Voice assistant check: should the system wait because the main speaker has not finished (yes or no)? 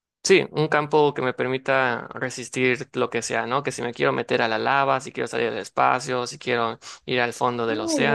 no